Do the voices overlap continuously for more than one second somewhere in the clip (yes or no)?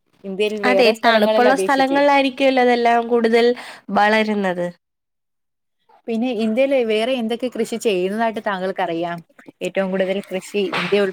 yes